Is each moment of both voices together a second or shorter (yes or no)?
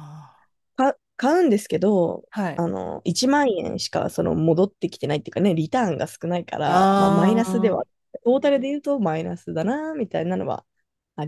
no